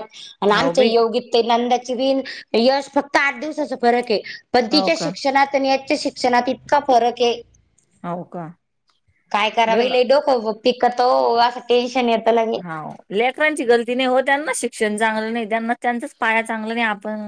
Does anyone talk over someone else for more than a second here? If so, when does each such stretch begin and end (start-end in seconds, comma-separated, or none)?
none